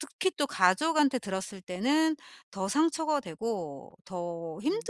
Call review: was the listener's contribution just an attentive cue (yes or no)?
yes